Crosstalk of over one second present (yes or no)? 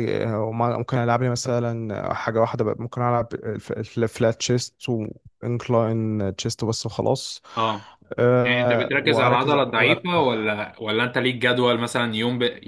yes